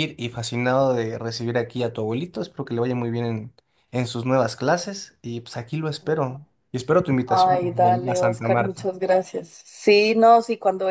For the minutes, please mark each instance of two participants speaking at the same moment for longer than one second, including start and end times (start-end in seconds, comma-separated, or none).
7.2-8.8